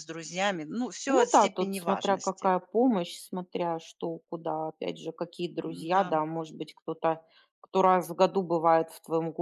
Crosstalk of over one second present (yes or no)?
yes